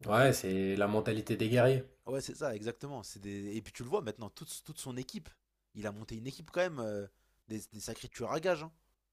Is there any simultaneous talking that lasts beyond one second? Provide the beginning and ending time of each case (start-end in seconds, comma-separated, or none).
none